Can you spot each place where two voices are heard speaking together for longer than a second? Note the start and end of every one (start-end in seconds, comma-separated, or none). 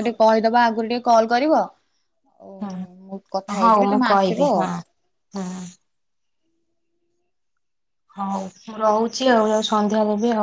3.1-4.6